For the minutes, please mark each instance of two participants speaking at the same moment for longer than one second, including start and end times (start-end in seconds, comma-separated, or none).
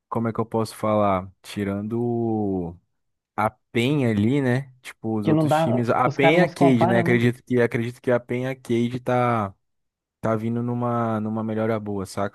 5.2-7.2